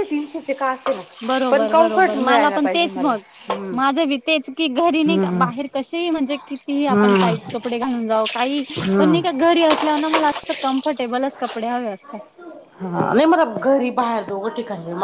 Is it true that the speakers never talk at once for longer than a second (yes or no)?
no